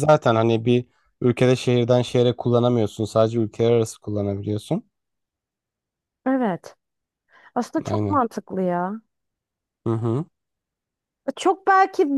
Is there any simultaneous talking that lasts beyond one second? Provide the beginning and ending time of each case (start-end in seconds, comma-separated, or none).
none